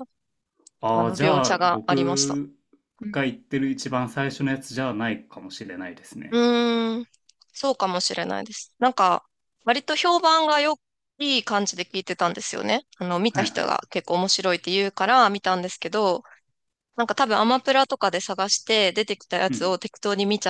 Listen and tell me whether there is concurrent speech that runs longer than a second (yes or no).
yes